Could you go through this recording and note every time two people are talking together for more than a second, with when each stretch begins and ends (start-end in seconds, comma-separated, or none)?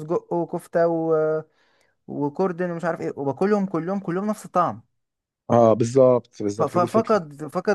none